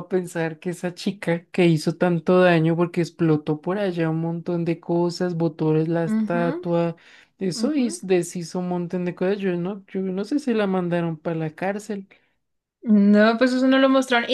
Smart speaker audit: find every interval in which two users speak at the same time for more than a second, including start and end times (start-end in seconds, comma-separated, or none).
none